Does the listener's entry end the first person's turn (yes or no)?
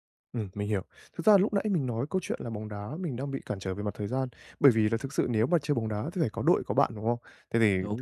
no